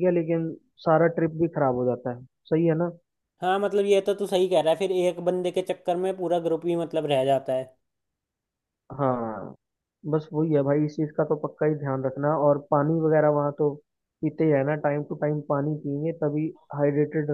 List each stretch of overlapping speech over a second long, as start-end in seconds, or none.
none